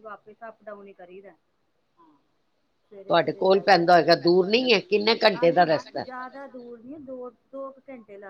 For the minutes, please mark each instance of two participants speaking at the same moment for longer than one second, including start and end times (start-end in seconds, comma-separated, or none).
2.9-6.0